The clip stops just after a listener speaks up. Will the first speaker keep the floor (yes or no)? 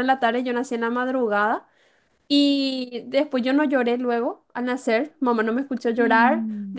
yes